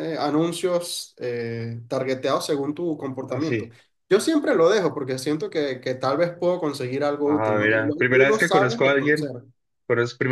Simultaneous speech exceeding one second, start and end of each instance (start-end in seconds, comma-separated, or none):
7.2-9.3